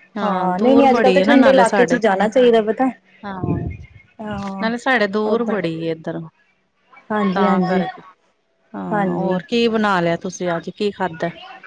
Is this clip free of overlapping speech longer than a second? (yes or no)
no